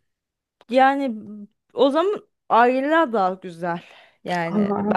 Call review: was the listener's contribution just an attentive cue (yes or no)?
no